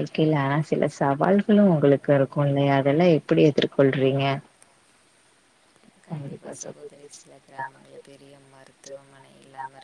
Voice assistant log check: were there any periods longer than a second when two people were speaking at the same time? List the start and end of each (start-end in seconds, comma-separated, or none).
1.4-3.5